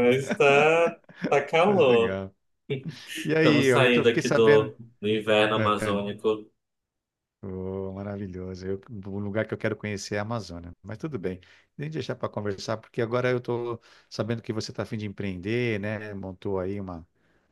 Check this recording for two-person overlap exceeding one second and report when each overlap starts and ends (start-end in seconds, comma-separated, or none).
3.2-4.8